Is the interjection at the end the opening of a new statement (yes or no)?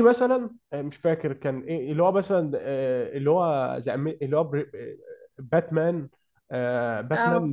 no